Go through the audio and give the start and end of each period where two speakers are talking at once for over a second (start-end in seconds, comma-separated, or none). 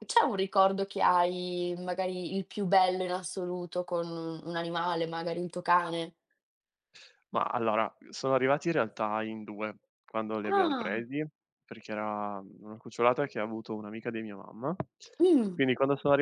none